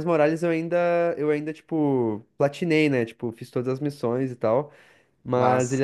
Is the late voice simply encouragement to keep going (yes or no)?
yes